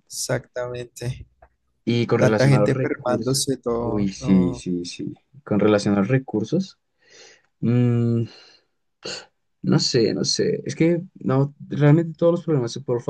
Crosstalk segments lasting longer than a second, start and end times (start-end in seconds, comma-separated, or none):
2.2-4.6